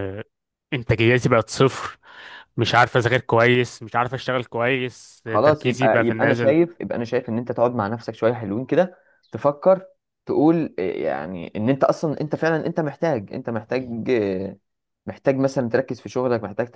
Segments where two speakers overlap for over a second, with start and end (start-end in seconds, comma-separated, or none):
5.2-6.6